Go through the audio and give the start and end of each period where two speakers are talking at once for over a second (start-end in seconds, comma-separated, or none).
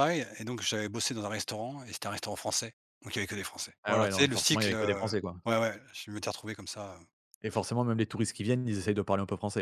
3.8-5.3